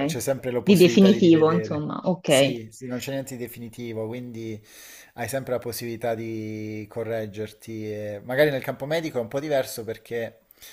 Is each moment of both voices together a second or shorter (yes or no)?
no